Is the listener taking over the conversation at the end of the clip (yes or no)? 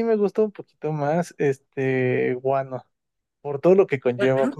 no